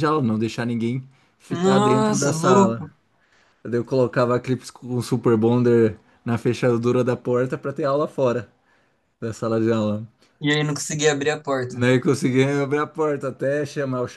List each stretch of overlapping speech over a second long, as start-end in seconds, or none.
1.5-2.9